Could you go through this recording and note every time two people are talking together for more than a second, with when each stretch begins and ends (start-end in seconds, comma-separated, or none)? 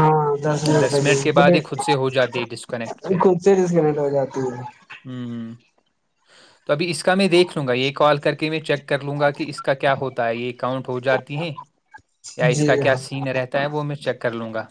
none